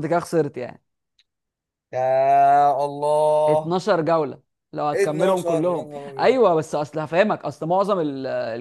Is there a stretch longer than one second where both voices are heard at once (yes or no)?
yes